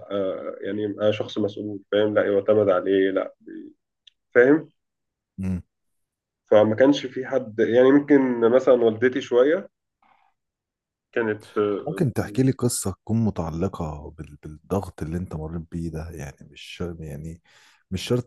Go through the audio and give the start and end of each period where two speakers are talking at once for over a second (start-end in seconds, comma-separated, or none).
none